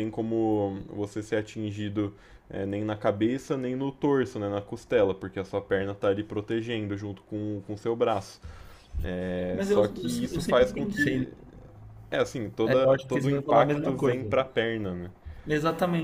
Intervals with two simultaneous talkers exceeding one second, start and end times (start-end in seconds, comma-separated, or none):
9.5-11.3, 12.6-14.2